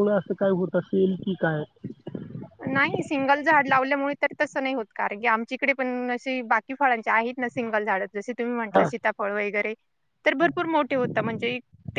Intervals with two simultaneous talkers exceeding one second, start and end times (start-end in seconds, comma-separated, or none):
none